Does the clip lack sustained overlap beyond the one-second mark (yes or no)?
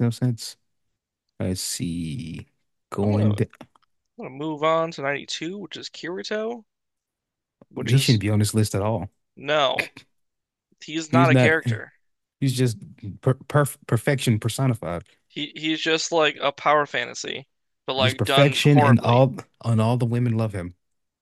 no